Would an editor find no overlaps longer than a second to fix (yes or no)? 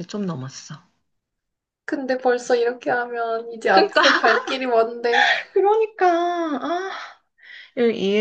yes